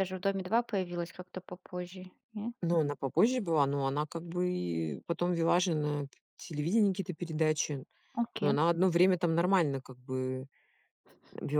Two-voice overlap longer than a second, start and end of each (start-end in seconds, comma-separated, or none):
none